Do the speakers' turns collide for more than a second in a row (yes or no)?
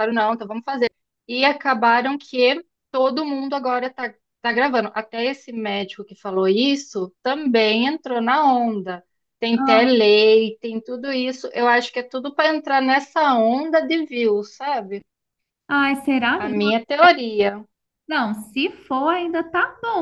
no